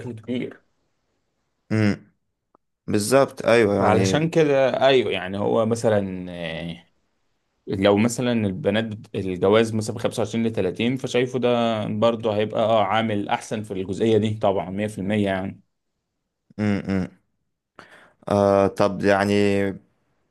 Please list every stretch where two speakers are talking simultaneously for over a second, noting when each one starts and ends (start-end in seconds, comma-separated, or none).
none